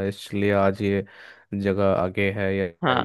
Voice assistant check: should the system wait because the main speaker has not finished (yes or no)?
no